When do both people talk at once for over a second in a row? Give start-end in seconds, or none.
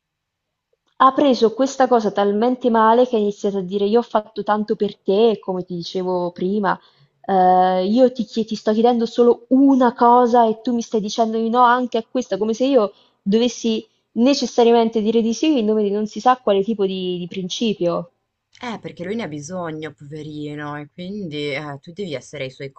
none